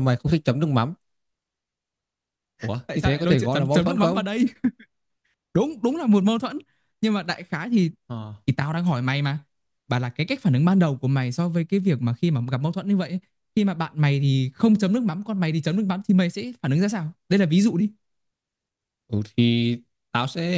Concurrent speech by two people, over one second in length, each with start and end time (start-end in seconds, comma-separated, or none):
2.9-4.2